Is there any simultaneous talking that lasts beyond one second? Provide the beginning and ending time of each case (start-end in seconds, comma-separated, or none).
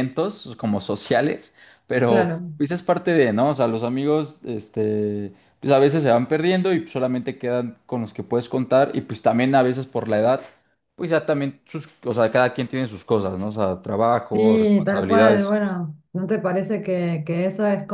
14.3-15.5